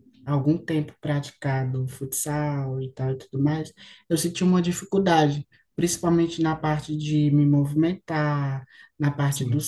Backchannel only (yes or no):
yes